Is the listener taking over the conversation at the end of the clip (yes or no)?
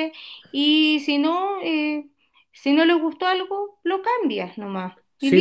yes